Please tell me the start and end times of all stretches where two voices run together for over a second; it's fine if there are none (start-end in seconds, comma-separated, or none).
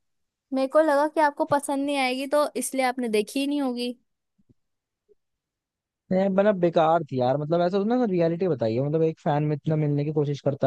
none